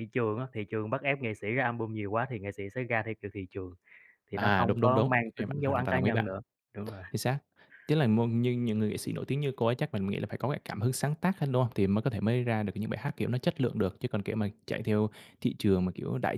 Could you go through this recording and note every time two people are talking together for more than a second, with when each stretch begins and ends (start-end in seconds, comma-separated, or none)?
4.4-6.3